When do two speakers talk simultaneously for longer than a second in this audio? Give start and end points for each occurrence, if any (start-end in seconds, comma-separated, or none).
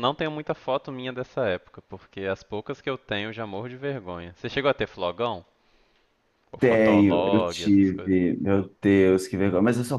6.6-8.2